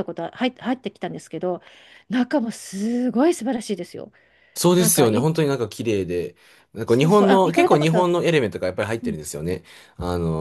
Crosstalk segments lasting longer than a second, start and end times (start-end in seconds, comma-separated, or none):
6.8-8.2